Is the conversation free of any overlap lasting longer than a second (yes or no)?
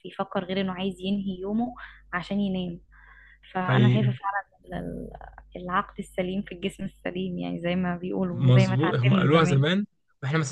no